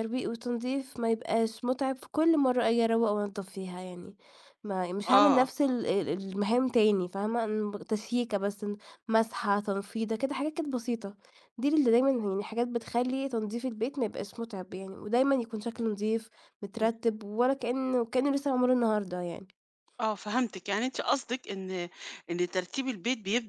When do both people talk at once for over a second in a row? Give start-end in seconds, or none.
none